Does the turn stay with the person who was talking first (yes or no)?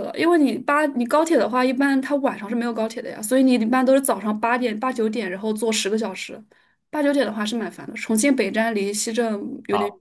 no